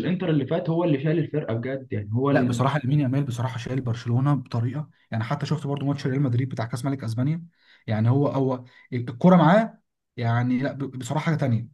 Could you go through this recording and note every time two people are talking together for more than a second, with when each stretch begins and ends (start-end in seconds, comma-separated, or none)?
none